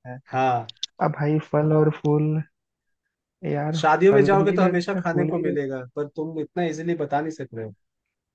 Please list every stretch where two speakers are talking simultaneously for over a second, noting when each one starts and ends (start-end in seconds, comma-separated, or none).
3.8-5.7